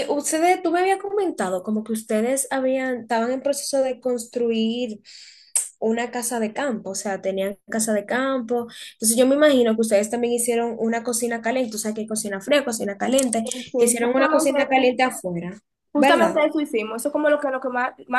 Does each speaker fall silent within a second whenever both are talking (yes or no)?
no